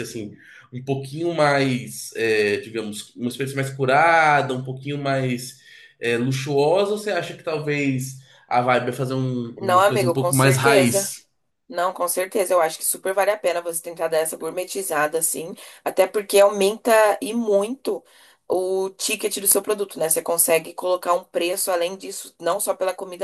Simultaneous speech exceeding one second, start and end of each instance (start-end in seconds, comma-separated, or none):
9.6-11.1